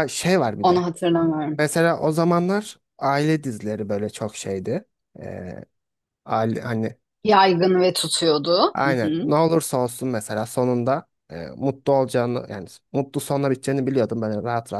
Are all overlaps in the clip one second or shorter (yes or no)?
yes